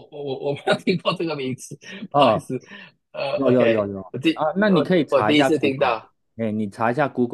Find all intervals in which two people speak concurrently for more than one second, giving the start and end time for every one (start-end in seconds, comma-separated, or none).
3.3-6.0